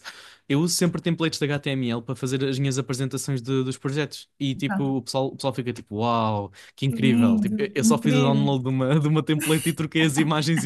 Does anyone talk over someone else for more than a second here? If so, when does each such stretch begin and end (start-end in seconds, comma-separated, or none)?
6.8-8.4